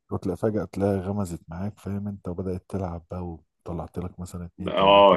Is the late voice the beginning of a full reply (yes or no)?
yes